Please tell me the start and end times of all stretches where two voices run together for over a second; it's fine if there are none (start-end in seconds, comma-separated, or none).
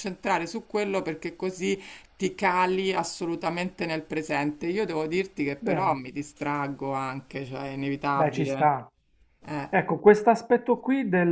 none